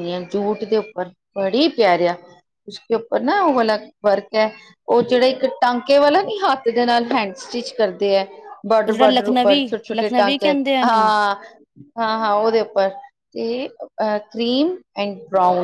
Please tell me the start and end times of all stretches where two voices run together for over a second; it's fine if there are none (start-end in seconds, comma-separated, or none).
8.7-11.1